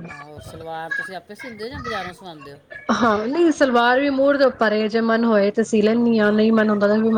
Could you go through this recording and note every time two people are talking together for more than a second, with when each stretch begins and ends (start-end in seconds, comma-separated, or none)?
none